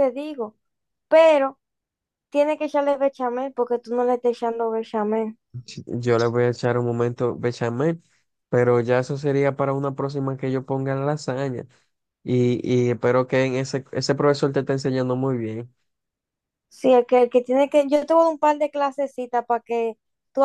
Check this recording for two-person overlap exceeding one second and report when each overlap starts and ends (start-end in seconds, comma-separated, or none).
none